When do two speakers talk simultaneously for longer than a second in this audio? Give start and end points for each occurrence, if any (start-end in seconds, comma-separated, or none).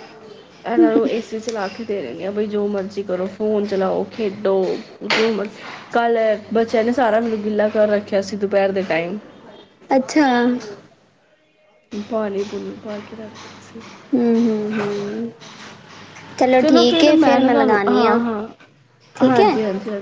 none